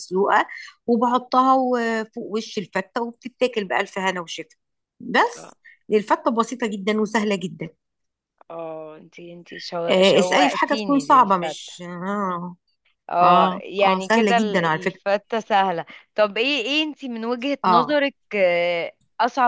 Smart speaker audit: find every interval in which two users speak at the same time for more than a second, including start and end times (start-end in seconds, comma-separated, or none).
9.9-11.7, 13.2-15.0